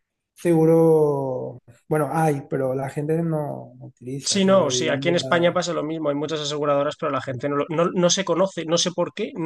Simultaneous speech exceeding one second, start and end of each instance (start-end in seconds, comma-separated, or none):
4.3-5.6